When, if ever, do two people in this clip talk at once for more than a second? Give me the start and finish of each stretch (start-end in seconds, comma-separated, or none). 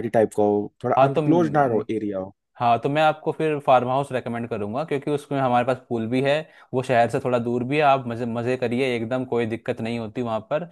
none